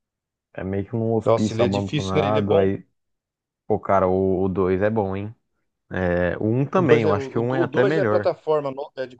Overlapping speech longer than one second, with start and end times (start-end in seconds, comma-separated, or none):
1.2-2.7, 6.8-8.3